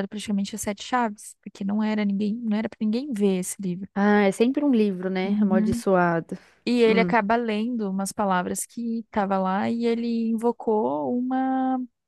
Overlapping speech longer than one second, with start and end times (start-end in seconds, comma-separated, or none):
none